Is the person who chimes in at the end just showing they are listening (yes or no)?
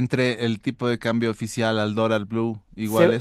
no